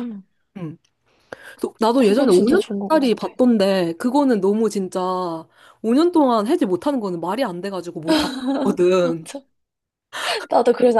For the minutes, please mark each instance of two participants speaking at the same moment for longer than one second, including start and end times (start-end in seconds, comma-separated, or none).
2.0-3.3